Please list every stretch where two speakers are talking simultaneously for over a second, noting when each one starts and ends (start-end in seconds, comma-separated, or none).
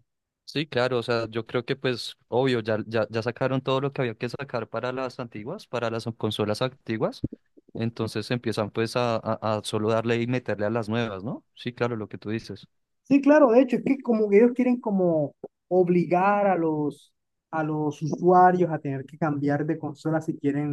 none